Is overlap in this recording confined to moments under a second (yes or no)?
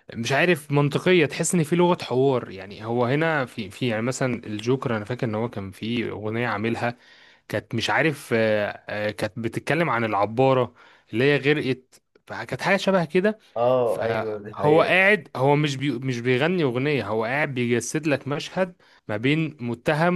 no